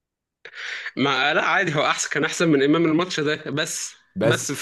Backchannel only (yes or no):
yes